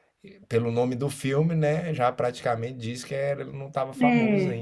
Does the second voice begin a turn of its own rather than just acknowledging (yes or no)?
no